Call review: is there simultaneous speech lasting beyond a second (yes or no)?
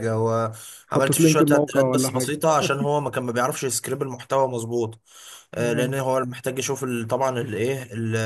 yes